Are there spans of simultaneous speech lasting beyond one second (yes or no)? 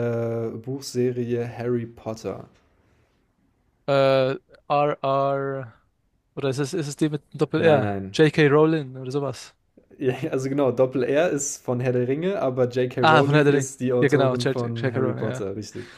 yes